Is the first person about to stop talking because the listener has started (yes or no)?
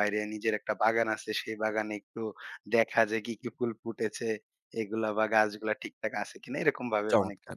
yes